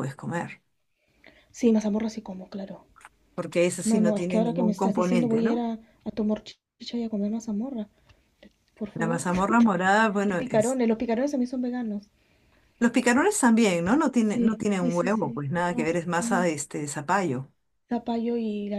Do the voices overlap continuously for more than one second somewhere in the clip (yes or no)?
yes